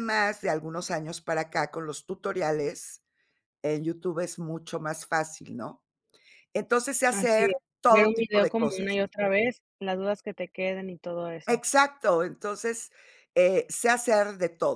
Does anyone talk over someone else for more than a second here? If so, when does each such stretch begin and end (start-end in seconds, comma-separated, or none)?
7.1-8.9